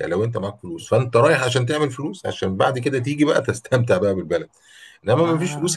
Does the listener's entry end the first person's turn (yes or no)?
no